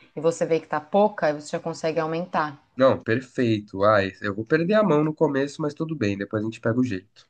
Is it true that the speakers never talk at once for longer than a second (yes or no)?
yes